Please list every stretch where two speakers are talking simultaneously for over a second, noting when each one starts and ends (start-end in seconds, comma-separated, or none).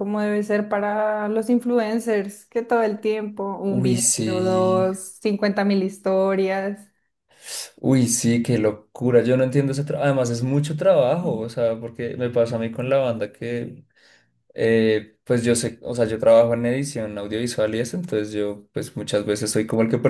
3.7-4.9